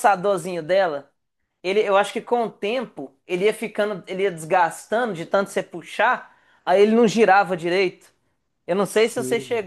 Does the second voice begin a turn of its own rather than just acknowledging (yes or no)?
no